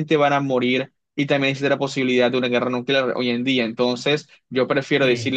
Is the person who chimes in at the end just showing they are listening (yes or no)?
yes